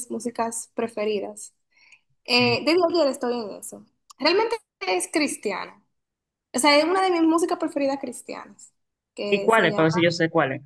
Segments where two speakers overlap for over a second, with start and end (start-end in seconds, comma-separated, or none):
none